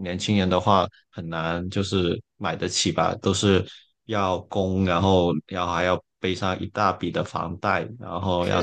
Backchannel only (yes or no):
yes